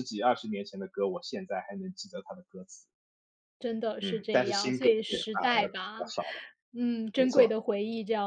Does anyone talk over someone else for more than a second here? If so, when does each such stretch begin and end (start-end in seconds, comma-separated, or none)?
4.0-6.0